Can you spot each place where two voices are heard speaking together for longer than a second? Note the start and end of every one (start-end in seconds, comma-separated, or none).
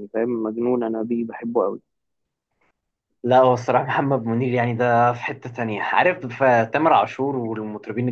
none